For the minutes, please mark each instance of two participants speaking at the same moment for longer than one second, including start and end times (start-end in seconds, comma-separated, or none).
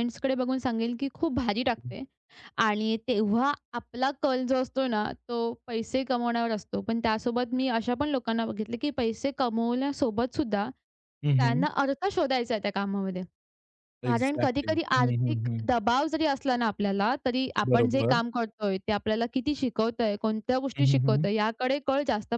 14.1-15.7